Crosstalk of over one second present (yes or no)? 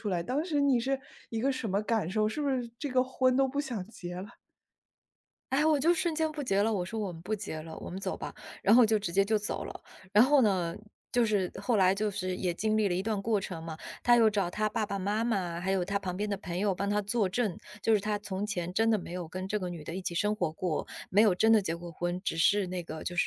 no